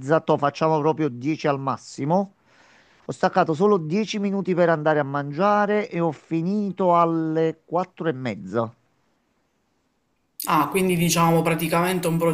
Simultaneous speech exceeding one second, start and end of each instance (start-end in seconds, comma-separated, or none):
none